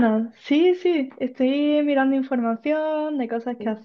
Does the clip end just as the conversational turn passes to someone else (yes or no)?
no